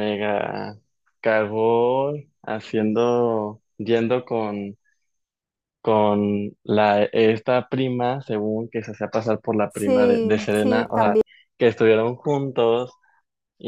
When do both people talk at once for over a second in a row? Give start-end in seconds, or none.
9.7-11.2